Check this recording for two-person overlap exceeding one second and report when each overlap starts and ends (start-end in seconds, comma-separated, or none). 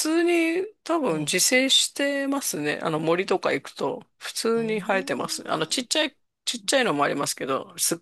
4.5-5.8